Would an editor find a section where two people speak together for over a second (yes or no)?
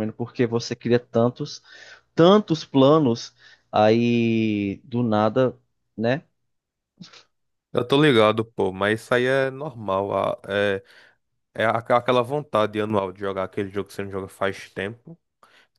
no